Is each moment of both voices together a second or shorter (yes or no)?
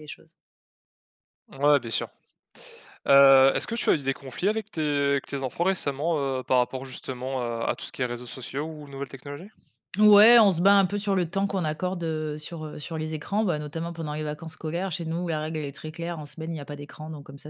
yes